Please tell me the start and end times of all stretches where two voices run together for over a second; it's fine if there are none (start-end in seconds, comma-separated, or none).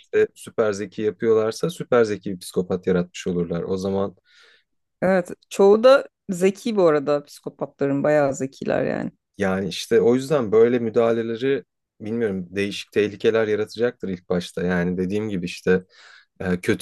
none